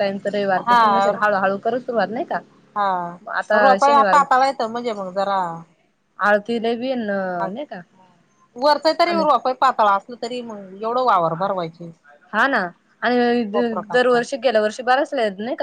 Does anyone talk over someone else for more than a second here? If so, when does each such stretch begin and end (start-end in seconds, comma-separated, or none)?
none